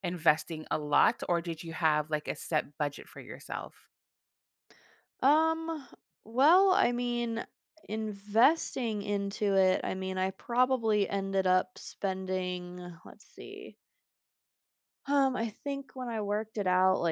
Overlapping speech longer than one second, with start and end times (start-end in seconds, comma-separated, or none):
none